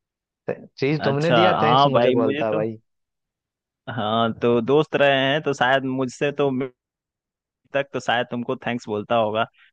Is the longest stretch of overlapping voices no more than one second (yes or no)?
no